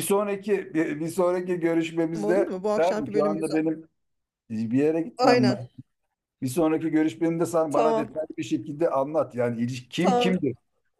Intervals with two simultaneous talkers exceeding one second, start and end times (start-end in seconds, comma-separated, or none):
2.2-3.6